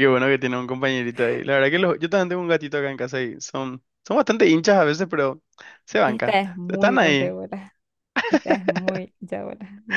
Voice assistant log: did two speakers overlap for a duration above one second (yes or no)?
yes